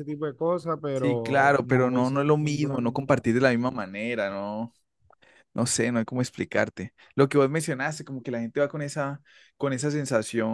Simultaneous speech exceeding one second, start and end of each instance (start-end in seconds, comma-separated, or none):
0.9-3.2